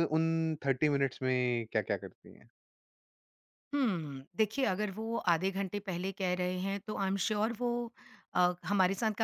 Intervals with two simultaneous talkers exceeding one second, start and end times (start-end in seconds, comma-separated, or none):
none